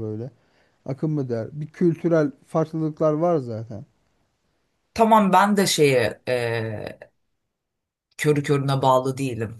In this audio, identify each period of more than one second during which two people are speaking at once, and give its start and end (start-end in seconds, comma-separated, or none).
none